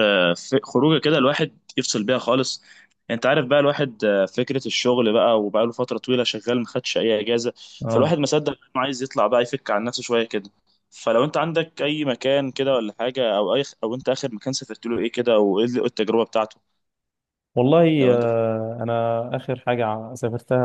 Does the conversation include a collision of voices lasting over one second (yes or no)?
no